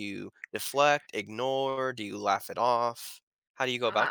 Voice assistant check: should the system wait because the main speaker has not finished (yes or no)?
no